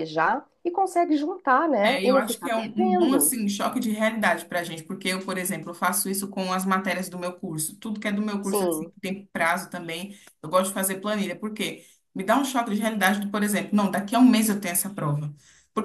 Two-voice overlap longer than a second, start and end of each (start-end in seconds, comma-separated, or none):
1.8-3.3